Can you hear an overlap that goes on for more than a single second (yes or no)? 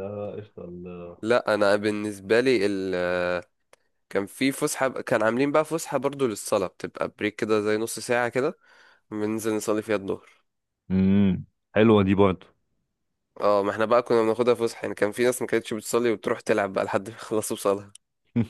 no